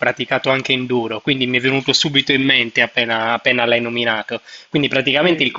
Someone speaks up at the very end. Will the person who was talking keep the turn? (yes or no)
yes